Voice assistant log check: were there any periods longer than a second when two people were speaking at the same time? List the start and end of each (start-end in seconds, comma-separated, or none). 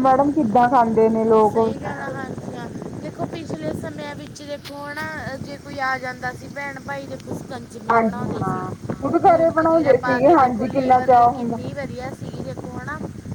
9.2-11.6